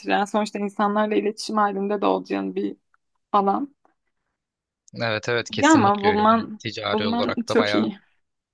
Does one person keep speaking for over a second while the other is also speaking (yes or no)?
yes